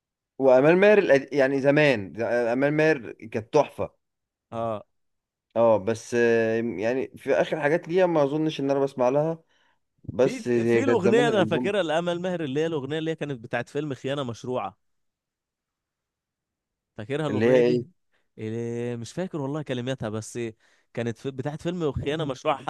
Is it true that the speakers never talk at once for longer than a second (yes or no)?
no